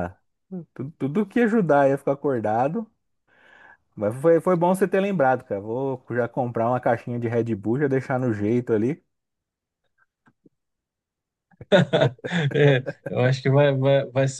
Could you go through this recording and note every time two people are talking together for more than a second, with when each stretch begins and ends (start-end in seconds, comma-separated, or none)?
none